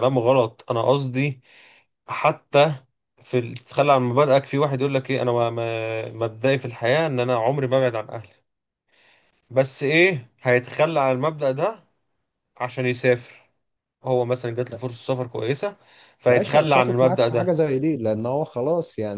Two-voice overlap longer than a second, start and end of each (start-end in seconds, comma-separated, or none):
16.3-17.5